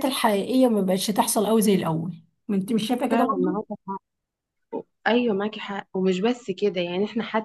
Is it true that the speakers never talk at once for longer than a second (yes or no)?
yes